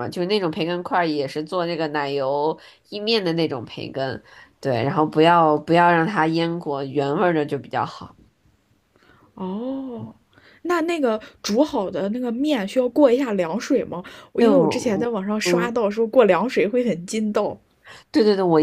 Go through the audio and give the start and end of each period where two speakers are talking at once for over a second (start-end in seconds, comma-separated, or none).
14.4-15.8